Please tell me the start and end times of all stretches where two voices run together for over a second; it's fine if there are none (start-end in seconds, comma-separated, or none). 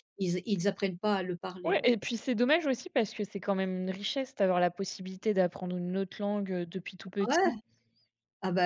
none